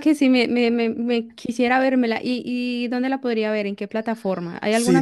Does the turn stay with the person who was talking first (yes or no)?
no